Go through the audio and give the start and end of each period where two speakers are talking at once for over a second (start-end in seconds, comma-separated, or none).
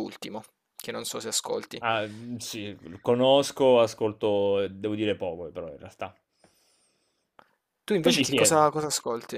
none